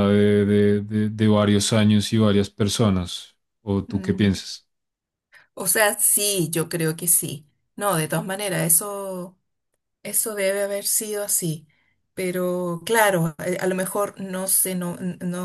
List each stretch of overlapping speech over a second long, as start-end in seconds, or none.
none